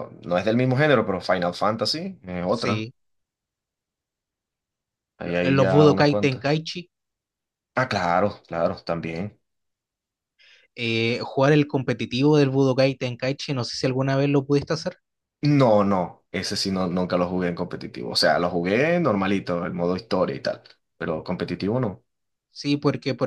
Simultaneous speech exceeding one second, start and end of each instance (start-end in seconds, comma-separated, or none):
5.2-6.5